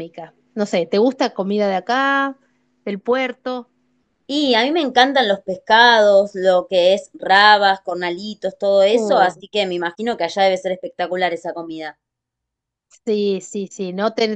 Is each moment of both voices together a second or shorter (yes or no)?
yes